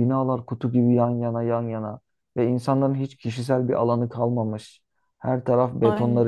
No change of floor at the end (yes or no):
yes